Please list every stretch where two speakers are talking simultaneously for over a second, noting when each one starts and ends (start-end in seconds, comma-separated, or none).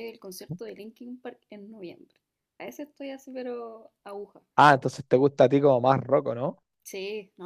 none